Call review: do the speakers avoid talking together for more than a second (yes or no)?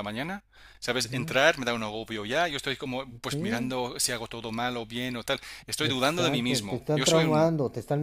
no